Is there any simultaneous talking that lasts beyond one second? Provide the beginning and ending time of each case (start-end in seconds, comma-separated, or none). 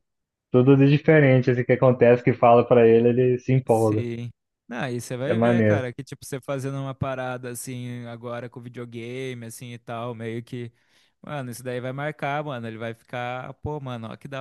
none